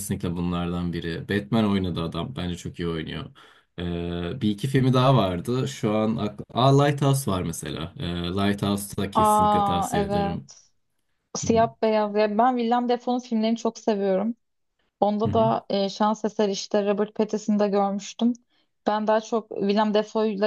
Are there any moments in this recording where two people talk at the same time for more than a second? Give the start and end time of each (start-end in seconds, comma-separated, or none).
9.1-10.4